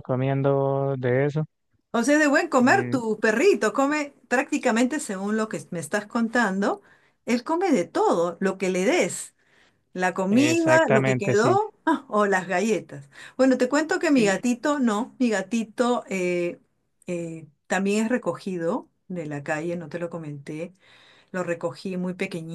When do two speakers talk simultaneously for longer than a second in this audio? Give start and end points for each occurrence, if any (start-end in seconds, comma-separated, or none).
10.3-11.6